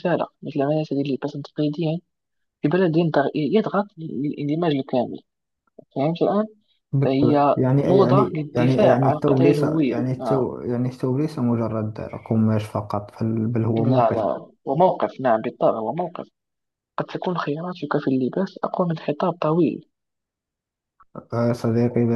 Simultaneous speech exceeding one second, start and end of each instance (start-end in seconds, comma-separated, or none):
7.0-10.5